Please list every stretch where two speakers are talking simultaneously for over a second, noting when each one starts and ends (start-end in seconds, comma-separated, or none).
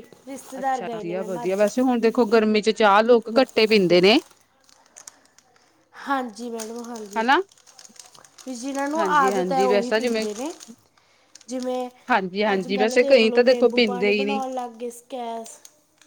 12.5-14.4